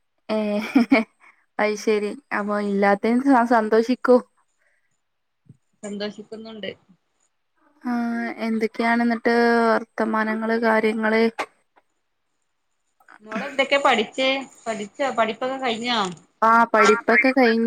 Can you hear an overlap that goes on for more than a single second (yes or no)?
no